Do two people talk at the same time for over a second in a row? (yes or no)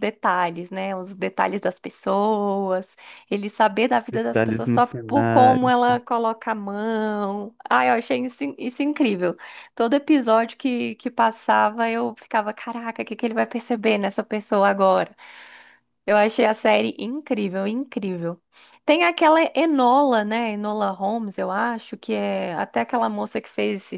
yes